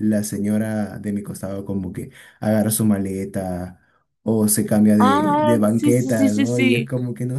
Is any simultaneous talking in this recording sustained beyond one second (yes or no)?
yes